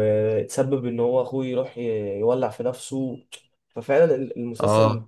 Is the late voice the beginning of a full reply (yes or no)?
no